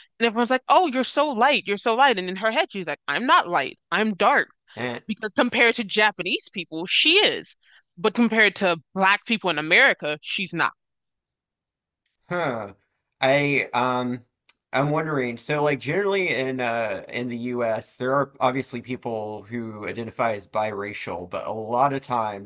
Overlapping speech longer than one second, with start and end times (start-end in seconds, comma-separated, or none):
none